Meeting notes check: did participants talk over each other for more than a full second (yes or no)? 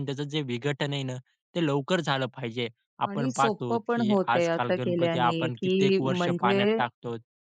yes